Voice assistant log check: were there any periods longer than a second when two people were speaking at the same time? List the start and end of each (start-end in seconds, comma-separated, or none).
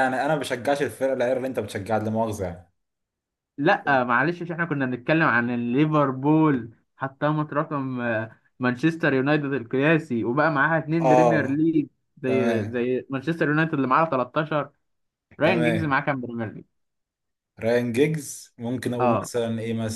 none